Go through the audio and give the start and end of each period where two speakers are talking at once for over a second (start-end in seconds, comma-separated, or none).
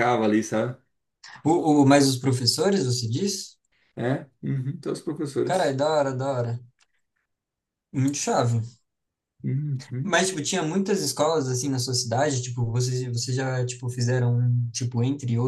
none